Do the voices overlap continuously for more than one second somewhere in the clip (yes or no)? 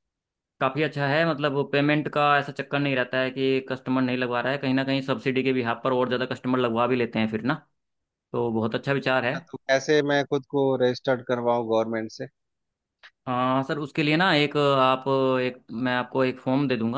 no